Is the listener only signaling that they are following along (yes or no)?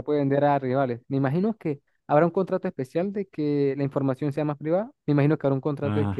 yes